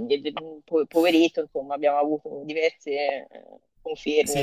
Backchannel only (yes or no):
no